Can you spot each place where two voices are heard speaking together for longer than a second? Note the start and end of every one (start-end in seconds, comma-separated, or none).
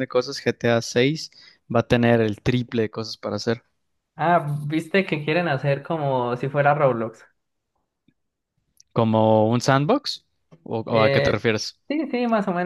none